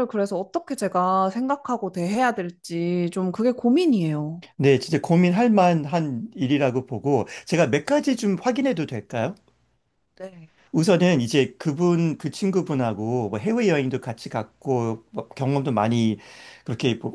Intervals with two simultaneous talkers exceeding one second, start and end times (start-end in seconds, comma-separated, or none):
none